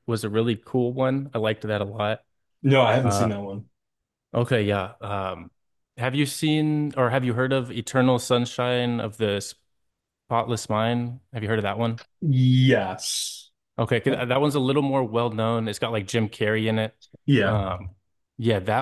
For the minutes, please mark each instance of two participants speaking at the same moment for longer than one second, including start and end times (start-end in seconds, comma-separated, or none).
none